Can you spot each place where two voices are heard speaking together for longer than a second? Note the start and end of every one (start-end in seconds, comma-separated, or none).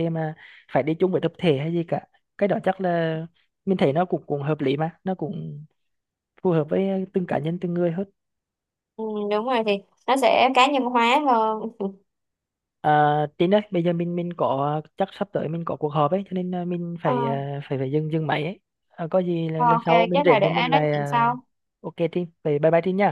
19.6-21.3